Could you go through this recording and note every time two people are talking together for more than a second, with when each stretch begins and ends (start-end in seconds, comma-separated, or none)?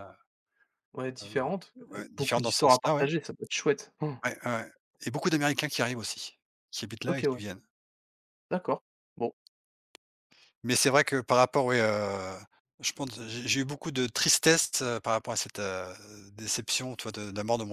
1.2-3.1